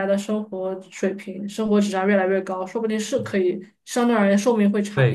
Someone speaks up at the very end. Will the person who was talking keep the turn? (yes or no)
no